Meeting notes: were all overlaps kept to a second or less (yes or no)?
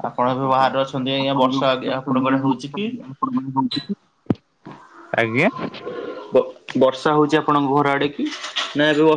no